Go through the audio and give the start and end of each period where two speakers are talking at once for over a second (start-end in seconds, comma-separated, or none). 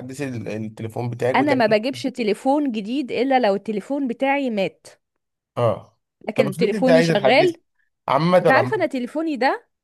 6.3-7.6